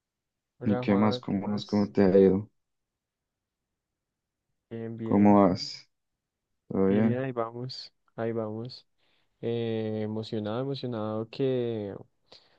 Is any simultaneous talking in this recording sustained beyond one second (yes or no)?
yes